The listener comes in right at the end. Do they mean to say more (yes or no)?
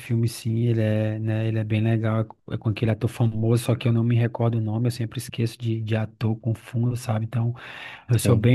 no